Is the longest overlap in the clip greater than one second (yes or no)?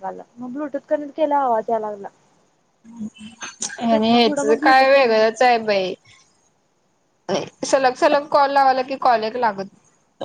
yes